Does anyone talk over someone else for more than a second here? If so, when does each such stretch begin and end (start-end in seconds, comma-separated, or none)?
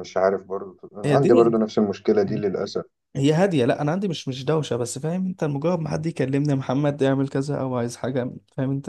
none